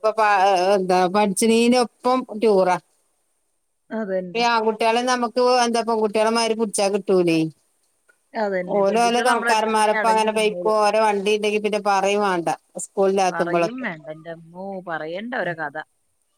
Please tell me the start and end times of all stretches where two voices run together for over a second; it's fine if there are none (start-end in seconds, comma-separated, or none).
8.8-10.6